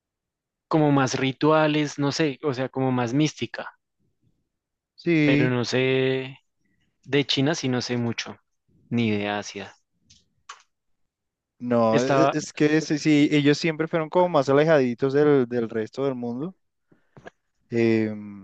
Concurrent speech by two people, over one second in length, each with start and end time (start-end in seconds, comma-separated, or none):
none